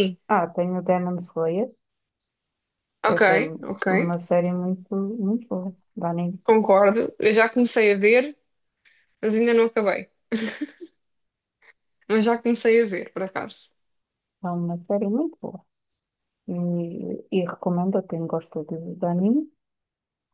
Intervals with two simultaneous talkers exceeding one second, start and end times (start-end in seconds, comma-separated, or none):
none